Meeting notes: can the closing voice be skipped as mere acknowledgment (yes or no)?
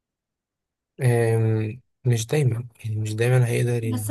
no